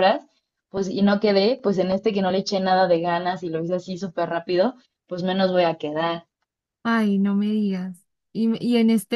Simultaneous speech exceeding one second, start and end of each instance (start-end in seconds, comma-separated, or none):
none